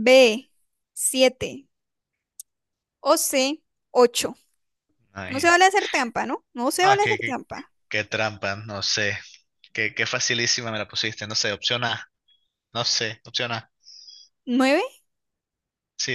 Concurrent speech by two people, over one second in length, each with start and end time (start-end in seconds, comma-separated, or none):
none